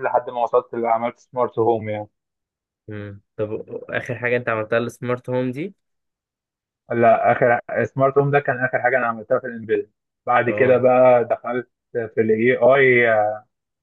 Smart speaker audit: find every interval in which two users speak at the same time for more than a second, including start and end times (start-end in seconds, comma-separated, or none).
none